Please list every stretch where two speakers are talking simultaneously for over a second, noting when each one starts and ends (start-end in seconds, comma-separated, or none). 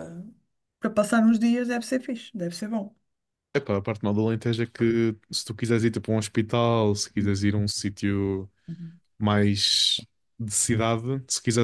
none